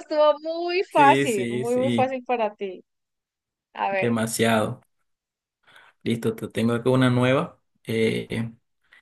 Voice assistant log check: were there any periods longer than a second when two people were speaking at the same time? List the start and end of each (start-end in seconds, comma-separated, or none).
0.9-2.1